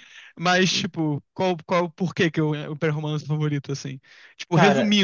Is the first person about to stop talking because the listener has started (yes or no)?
no